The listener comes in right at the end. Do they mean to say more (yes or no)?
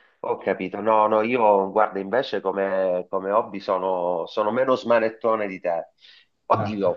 no